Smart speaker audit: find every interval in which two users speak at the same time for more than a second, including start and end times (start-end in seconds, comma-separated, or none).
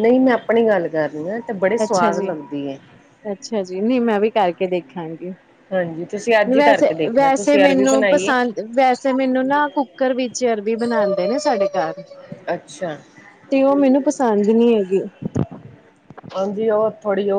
6.6-8.3